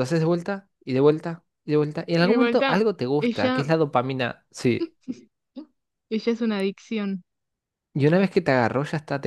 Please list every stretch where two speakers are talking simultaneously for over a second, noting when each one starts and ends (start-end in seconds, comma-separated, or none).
2.2-3.7